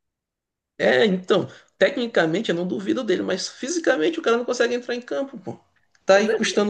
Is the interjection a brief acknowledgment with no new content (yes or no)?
yes